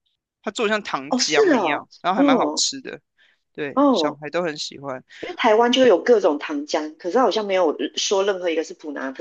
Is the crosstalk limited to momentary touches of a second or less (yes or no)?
no